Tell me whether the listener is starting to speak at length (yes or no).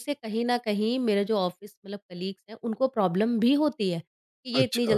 no